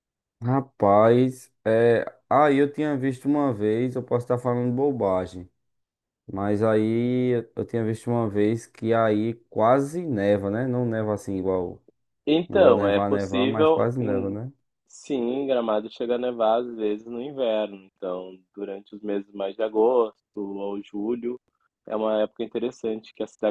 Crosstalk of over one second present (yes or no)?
yes